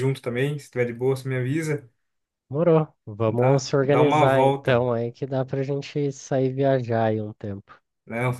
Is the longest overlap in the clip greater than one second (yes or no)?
yes